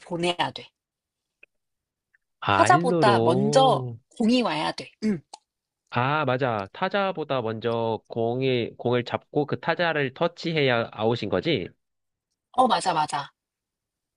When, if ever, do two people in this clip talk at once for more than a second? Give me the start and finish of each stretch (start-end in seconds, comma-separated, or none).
2.6-4.0